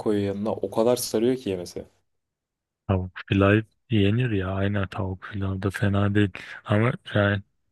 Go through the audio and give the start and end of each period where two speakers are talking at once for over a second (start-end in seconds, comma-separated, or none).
none